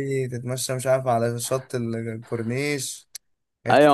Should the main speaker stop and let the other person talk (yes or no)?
yes